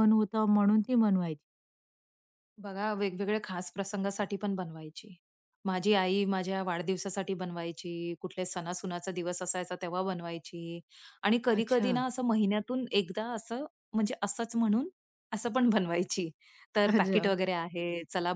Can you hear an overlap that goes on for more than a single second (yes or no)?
no